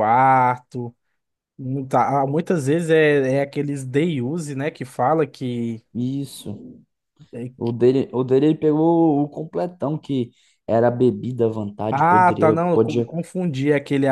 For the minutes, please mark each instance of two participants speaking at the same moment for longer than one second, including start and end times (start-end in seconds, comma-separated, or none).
11.9-13.1